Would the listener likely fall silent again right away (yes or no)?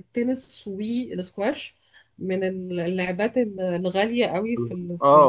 no